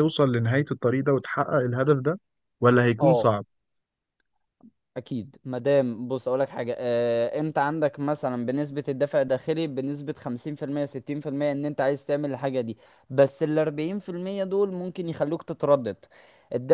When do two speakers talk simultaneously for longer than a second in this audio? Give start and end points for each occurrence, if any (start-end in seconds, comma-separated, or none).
none